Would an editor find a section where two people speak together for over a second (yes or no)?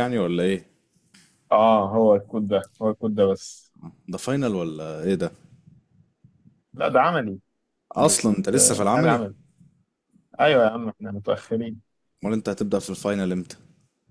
yes